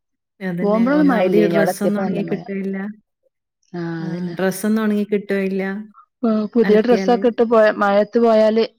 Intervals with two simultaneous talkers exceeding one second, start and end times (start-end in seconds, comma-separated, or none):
0.6-2.4